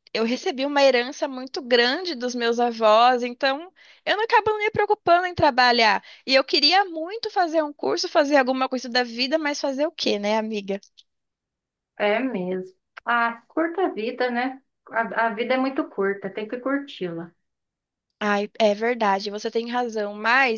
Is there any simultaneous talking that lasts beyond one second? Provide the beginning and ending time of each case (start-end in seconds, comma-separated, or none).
none